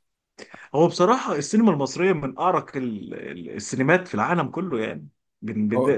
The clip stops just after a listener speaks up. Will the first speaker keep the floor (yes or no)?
yes